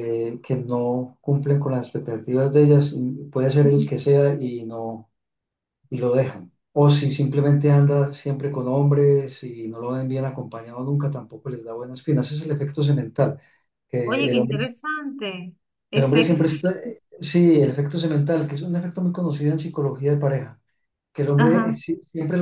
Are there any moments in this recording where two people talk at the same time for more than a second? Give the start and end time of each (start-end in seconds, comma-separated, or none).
none